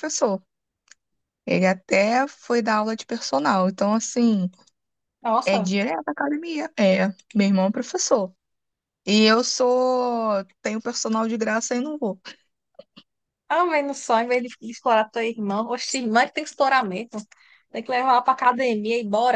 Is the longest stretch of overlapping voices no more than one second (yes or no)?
yes